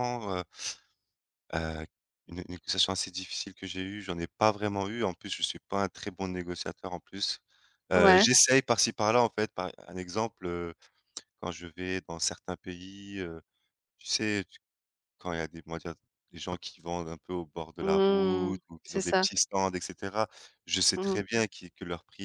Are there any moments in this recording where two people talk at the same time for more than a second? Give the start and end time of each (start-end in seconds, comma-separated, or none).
17.8-19.3